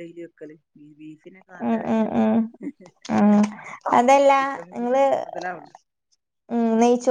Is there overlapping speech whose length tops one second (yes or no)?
no